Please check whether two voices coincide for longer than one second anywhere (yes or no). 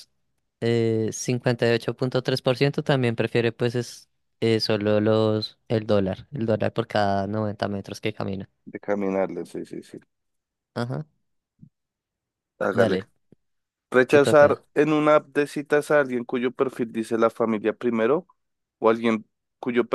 no